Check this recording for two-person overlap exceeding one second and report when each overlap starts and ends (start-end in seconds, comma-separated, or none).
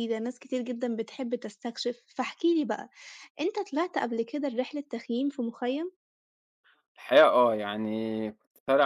none